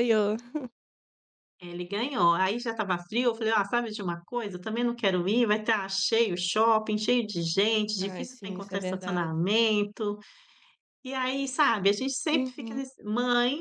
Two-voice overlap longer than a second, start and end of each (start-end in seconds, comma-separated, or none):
8.0-9.3